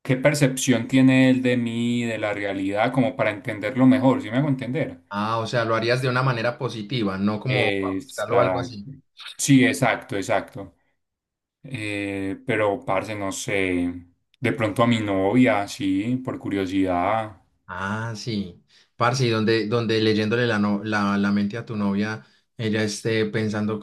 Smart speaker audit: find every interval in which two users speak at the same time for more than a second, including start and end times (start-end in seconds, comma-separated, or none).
7.5-8.8